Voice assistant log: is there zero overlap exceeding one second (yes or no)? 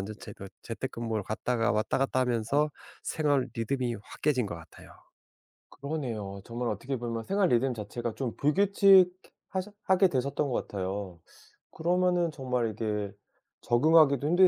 yes